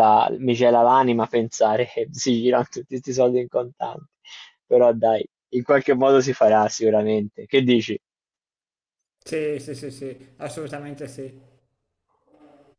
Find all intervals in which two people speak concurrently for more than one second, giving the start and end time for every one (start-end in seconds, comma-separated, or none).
none